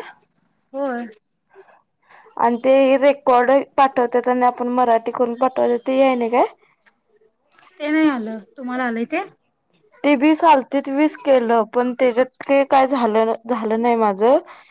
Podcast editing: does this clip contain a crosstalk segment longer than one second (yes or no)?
no